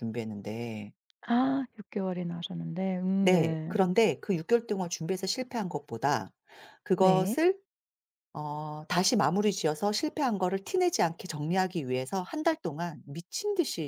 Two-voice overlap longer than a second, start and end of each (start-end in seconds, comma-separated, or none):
none